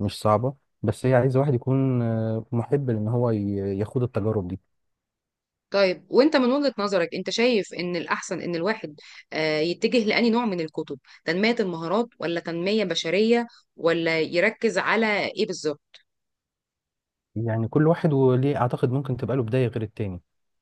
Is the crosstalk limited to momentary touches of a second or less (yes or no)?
yes